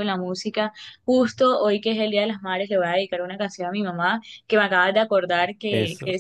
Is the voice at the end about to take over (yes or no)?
no